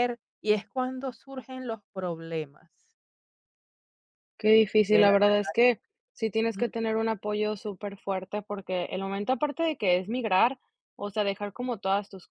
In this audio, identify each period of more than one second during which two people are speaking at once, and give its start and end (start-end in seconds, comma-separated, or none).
none